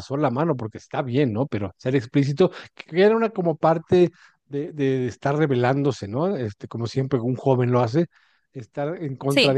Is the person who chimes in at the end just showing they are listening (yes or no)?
yes